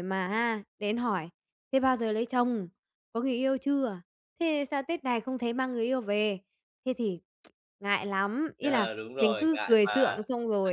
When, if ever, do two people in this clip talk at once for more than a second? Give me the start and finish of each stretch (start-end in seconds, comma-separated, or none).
8.6-10.2